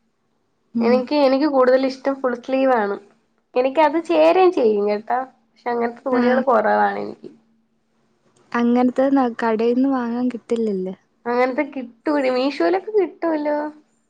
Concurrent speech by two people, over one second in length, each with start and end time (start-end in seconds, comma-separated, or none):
none